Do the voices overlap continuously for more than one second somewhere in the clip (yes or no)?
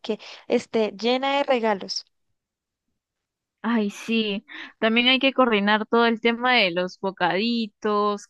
no